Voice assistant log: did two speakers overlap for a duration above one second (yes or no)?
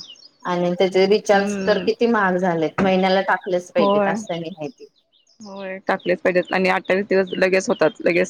no